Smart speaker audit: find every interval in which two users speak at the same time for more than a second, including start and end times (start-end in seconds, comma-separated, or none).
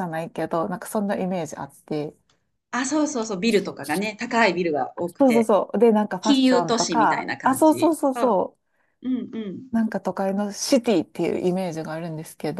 6.2-8.4